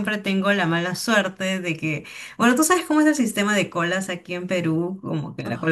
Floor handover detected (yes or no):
no